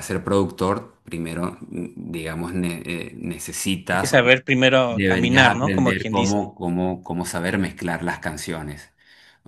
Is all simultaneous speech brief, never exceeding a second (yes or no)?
no